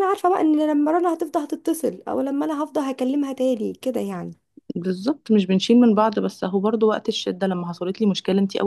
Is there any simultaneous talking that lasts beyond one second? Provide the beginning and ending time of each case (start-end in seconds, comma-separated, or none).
none